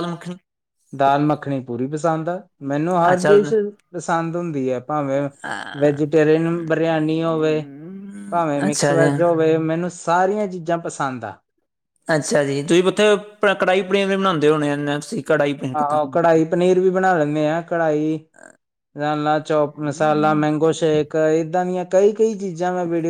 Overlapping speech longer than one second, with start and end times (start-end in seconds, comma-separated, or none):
none